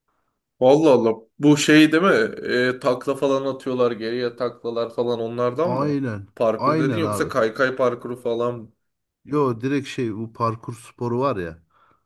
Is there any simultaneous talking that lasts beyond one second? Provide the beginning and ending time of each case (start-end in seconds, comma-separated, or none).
5.6-7.3